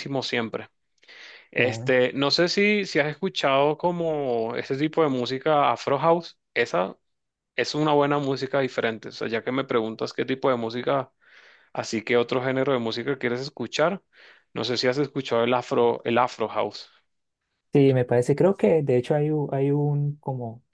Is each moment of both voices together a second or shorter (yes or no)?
yes